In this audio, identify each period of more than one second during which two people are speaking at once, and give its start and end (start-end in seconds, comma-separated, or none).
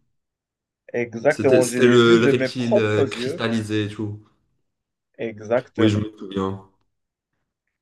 1.3-3.5